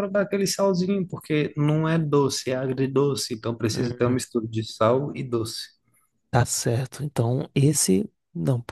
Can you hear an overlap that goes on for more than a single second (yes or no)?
no